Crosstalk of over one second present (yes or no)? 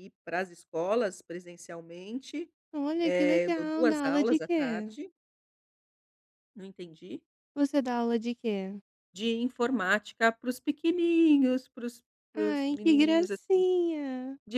yes